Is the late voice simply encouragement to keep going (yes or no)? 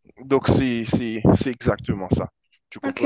no